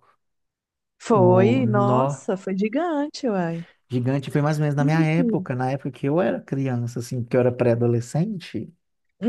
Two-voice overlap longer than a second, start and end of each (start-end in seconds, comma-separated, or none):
1.1-2.3